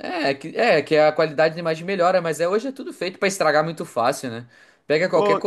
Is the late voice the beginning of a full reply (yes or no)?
no